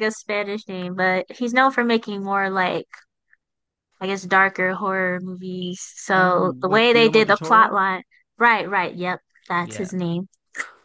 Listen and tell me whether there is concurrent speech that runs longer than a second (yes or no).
yes